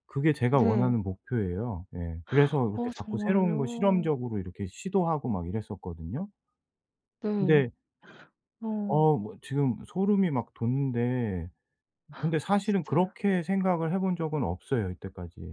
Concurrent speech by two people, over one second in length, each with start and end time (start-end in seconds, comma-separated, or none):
2.7-4.1